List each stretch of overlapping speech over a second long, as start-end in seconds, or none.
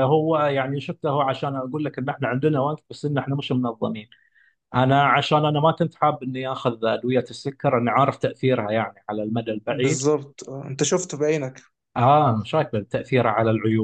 none